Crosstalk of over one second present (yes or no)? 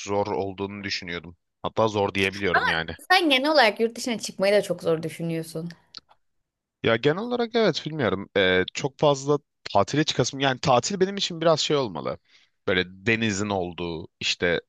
no